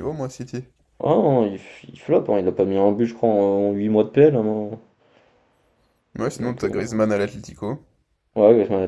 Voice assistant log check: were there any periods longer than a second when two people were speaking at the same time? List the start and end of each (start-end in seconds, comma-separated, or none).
none